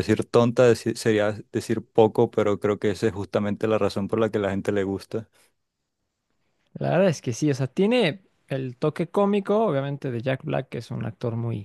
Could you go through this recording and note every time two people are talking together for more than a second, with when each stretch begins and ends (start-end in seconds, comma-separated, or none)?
none